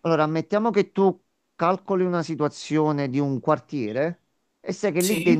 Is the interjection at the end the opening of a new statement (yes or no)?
no